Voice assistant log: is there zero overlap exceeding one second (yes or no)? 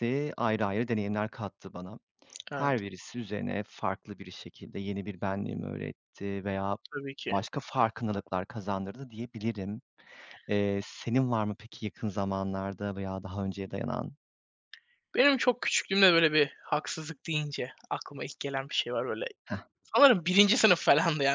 yes